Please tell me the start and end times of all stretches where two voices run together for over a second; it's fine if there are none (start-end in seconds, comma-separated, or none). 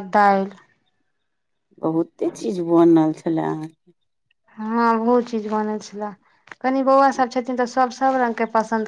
none